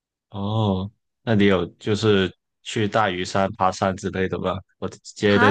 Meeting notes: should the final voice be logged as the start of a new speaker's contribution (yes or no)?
no